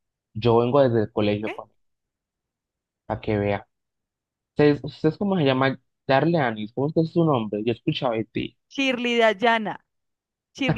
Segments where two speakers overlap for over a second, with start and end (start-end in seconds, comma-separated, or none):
none